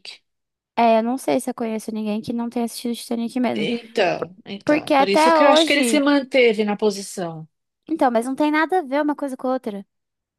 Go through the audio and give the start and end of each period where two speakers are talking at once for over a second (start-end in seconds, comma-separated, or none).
4.6-6.0